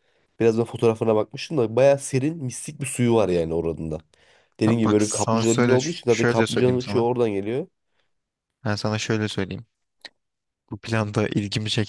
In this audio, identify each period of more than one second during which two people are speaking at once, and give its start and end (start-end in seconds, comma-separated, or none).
4.7-7.1